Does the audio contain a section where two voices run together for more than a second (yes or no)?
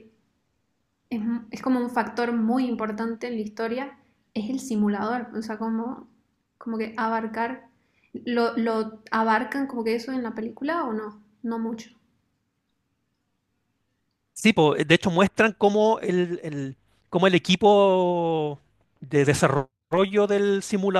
no